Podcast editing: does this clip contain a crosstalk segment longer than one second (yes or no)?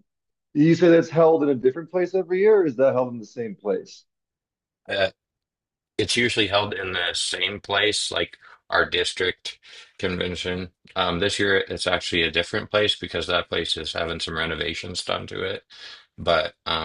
no